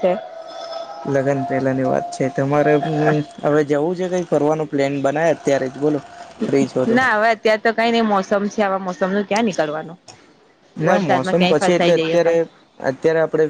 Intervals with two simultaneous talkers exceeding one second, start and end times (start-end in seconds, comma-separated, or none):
10.9-12.3